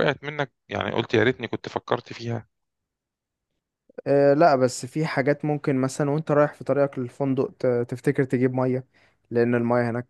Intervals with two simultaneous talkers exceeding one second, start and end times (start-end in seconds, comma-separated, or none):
none